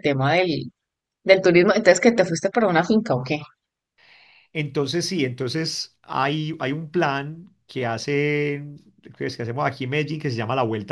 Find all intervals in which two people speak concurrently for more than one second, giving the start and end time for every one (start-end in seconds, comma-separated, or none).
none